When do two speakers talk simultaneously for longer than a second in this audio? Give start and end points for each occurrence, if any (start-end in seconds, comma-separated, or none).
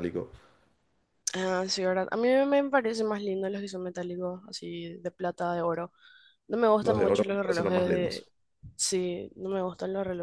6.8-8.3